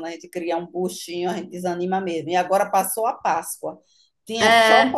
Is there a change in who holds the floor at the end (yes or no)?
no